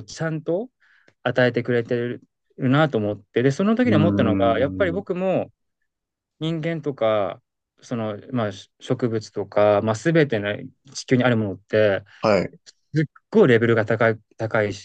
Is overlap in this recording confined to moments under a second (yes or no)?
no